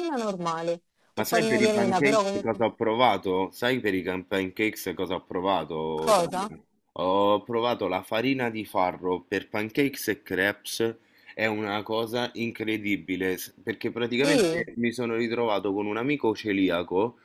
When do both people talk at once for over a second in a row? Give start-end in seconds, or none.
1.1-2.6